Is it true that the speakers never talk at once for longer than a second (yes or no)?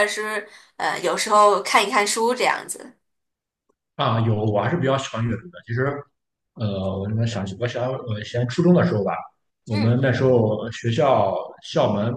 yes